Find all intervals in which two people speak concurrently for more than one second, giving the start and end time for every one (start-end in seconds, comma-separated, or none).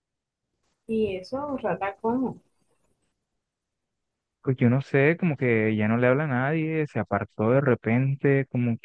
none